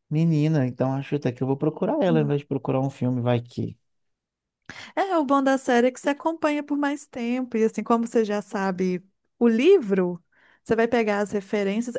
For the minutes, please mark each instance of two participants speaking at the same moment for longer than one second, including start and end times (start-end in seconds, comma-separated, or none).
none